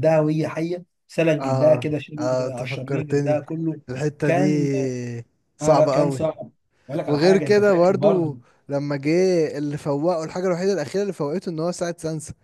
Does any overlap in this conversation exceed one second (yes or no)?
yes